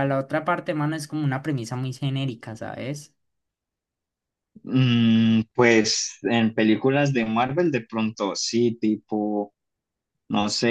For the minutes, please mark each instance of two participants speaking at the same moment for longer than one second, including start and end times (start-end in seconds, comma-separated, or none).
none